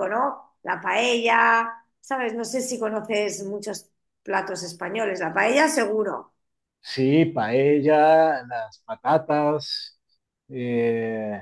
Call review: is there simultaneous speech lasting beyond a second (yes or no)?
no